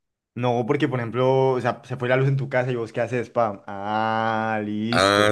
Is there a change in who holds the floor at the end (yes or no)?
yes